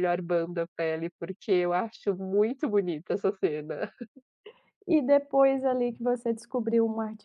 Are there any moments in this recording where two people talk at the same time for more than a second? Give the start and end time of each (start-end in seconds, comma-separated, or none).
none